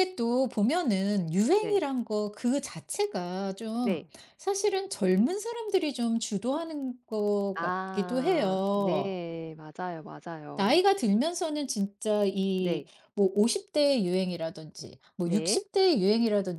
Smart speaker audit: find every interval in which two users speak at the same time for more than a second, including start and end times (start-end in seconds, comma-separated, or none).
7.5-9.2